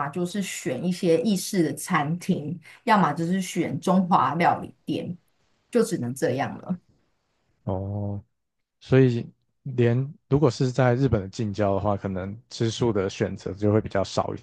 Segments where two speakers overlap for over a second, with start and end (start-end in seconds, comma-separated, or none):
none